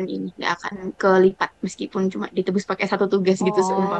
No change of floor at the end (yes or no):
no